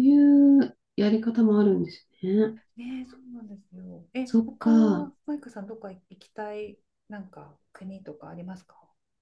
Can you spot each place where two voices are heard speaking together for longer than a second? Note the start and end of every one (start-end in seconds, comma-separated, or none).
none